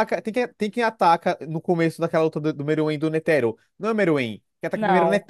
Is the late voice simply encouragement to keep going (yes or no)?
yes